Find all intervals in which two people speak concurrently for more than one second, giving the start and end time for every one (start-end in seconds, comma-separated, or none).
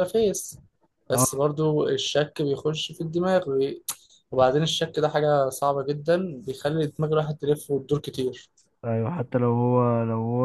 none